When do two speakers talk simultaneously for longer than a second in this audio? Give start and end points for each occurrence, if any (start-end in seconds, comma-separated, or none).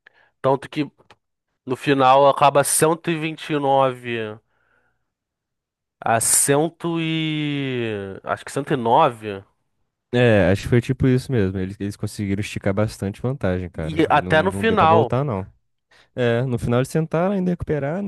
13.8-15.1